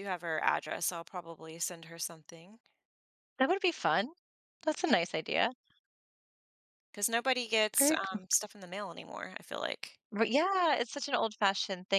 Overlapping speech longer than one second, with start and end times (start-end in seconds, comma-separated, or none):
none